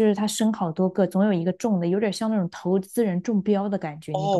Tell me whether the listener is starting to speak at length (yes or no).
yes